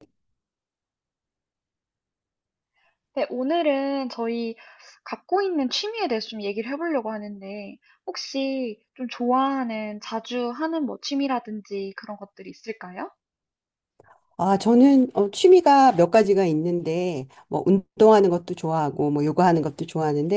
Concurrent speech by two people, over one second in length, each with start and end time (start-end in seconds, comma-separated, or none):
none